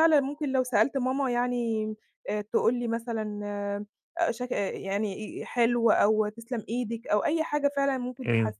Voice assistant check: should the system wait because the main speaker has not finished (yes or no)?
yes